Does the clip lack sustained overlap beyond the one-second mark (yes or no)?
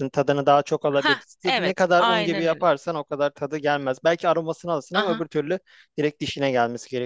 no